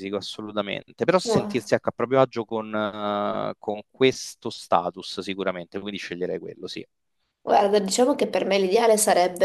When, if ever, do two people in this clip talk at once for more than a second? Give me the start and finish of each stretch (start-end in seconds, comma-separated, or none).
none